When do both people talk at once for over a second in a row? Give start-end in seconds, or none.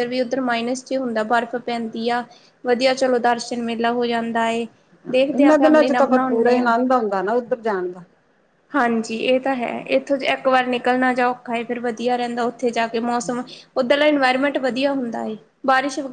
5.3-6.7